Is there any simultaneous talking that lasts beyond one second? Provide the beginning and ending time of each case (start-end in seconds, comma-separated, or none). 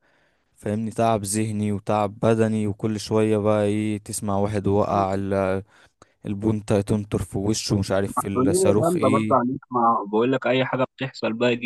8.2-9.4